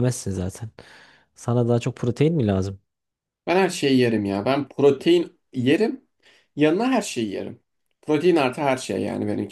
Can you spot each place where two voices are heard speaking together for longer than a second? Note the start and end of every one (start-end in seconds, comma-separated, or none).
none